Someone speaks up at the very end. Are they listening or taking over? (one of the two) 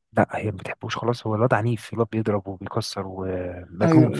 taking over